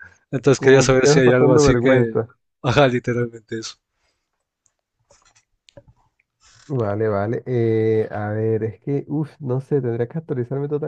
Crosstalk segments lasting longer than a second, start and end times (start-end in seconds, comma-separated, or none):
0.5-2.2